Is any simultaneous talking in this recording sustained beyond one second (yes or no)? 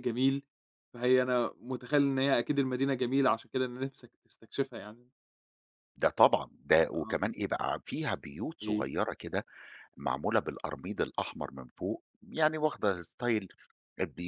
no